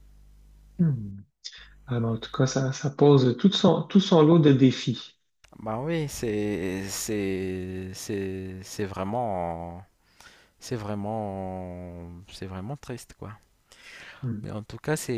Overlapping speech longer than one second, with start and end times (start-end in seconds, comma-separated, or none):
none